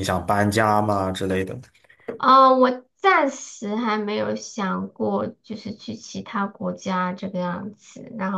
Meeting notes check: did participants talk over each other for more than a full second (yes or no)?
no